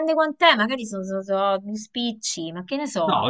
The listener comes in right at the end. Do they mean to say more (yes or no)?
yes